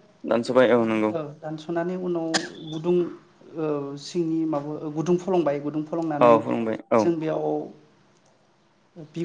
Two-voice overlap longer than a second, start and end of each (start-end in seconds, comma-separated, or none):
none